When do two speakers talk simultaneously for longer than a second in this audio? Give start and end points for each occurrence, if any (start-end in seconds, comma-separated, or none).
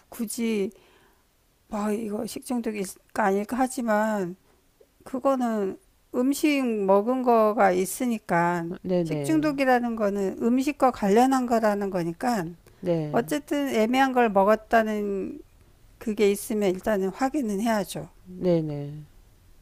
none